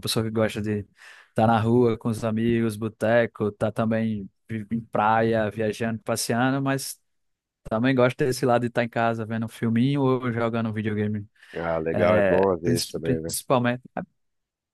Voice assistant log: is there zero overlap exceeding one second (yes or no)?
no